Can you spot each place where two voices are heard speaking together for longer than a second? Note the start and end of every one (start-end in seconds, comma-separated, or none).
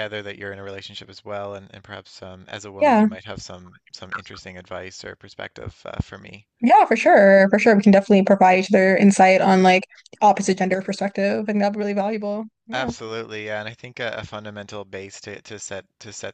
none